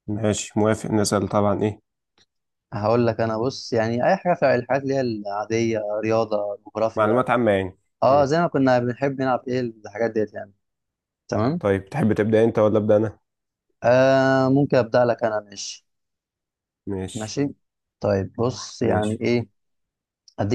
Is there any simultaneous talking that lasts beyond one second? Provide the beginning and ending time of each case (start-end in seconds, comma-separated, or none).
none